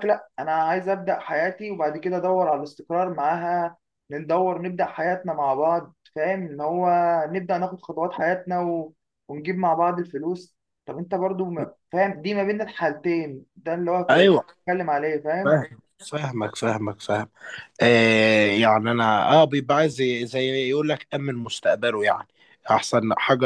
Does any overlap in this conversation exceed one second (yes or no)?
no